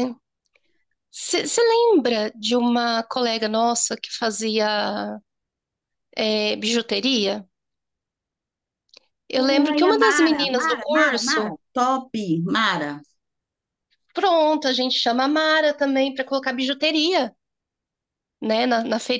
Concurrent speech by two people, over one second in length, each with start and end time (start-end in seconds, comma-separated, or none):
9.7-11.6